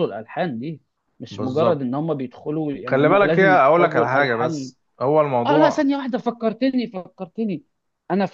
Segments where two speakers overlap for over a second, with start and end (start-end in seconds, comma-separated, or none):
2.9-4.7